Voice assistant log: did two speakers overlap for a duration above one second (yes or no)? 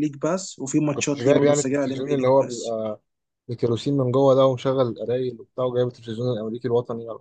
yes